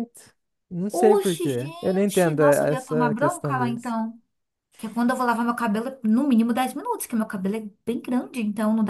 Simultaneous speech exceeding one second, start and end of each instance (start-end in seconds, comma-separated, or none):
0.9-4.0